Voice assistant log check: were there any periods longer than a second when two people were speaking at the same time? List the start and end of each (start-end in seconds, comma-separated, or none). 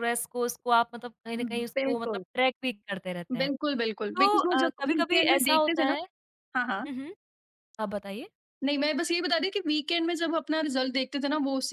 4.2-6.0